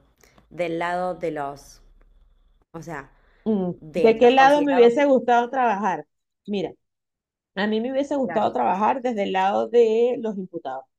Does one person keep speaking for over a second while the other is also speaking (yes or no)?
yes